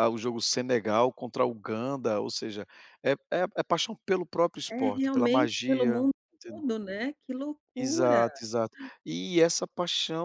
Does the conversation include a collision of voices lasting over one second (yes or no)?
yes